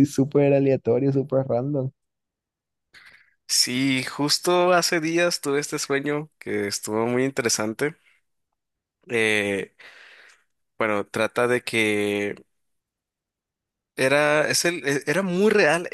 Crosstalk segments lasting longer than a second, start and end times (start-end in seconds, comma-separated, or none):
none